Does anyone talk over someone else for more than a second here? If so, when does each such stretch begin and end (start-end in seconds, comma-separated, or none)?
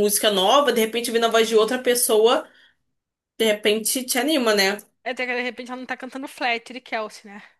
none